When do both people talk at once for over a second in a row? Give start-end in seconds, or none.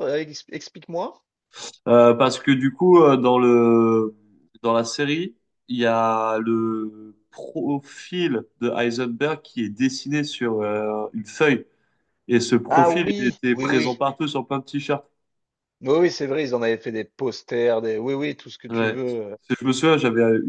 12.7-14.0